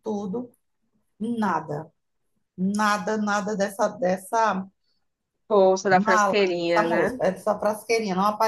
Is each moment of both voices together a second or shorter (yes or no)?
no